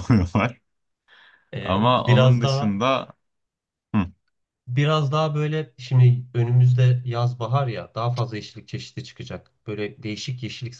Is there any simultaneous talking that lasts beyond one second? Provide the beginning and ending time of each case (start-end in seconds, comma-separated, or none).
1.6-2.8